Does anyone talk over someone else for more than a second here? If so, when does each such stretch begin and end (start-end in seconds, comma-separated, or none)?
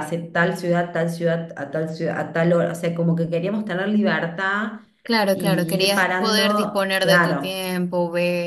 5.3-7.6